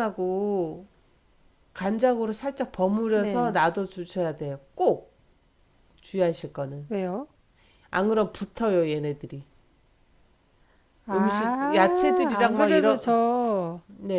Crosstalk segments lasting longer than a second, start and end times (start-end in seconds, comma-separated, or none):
11.1-13.2